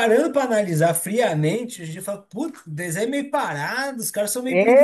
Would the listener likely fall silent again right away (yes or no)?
no